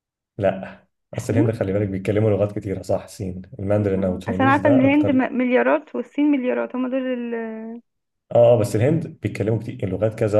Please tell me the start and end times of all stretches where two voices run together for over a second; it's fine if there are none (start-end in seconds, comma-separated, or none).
3.8-5.2